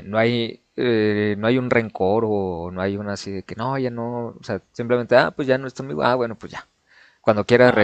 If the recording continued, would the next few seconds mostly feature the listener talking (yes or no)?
no